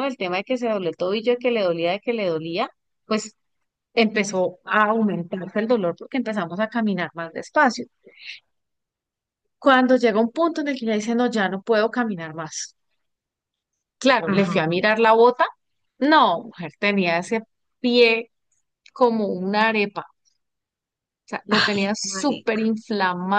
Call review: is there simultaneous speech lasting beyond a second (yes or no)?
yes